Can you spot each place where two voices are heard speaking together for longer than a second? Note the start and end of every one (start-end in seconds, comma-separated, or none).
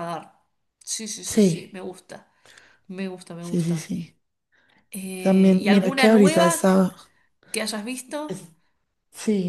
5.2-6.7